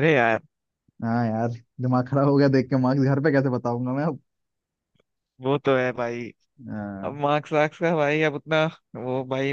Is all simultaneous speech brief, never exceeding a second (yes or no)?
yes